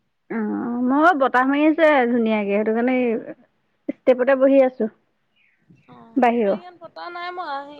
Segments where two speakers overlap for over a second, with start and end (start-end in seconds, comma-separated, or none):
none